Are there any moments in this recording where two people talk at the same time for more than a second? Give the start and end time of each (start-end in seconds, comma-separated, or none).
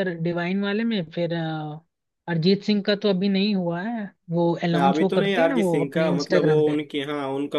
4.7-6.8